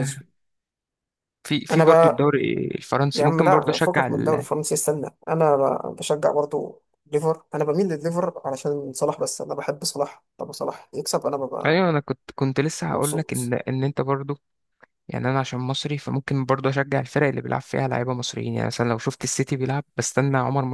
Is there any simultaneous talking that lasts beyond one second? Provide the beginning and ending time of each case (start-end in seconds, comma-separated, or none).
3.1-4.5